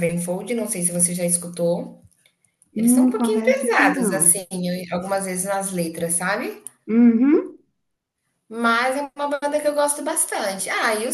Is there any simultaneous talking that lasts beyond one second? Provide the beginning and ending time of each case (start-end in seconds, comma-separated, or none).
2.8-4.4